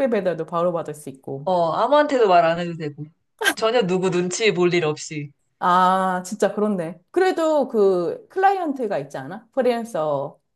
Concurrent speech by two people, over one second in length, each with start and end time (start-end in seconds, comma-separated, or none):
none